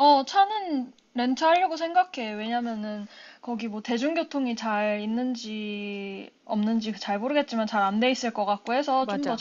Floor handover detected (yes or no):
no